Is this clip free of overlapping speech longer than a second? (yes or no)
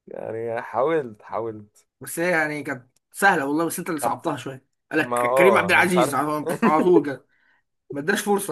no